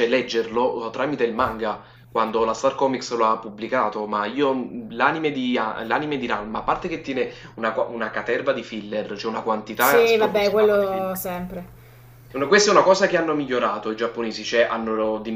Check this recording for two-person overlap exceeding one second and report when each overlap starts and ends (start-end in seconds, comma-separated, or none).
9.8-11.2